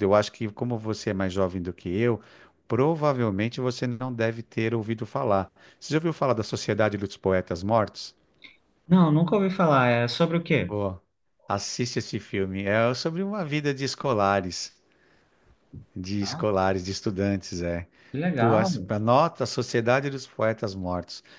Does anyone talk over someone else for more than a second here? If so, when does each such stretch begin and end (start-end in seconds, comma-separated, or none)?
none